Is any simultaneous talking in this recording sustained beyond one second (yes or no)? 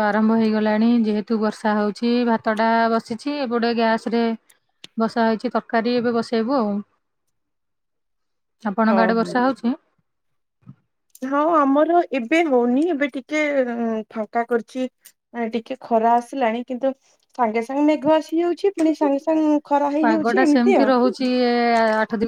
no